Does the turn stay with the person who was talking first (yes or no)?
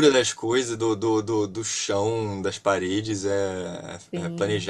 yes